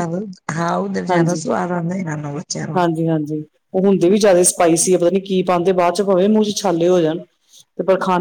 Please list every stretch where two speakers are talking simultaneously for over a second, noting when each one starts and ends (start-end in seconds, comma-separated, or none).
none